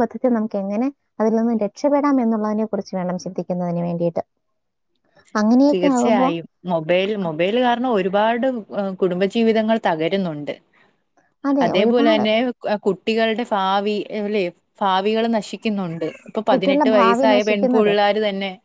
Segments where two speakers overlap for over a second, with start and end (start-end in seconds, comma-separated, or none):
16.5-17.9